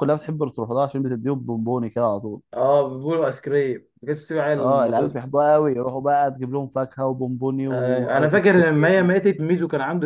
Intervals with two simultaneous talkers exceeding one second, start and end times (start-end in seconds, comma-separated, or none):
7.7-9.1